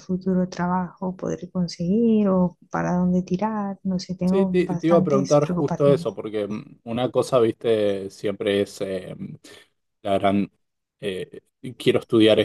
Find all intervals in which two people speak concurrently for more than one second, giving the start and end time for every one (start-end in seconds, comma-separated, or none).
4.2-6.2